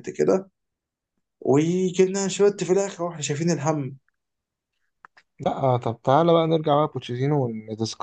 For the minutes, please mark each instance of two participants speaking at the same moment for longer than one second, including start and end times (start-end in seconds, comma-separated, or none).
none